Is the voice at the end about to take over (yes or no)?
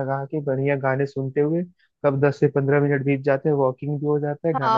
yes